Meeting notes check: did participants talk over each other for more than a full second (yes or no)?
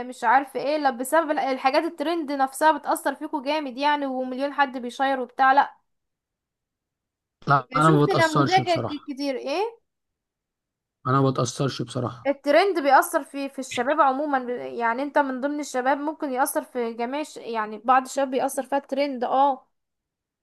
yes